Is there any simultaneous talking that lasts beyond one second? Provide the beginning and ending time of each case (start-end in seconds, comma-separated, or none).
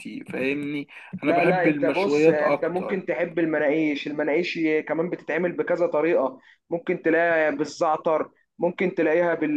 1.2-3.0